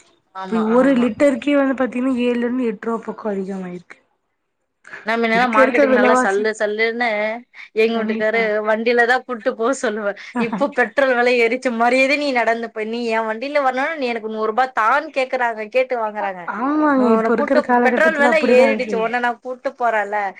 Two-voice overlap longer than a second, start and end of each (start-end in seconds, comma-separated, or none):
17.0-19.0